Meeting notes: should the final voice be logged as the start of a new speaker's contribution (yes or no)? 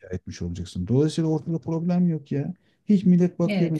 yes